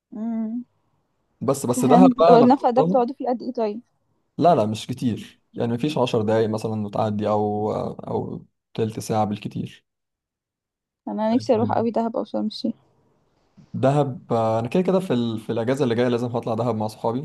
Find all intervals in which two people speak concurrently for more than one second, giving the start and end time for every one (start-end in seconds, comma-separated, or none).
1.8-3.0